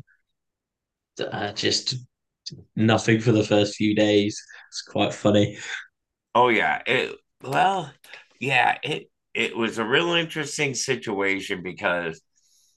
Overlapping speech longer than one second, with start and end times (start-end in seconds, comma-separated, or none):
none